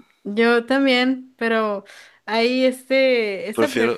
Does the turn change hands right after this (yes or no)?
no